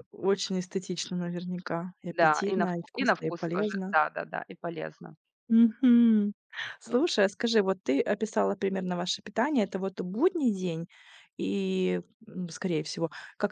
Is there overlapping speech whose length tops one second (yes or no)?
yes